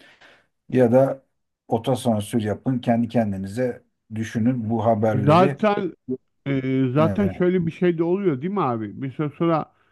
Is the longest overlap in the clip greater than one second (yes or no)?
no